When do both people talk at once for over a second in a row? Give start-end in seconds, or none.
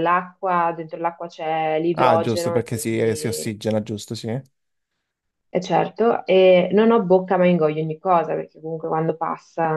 1.9-3.6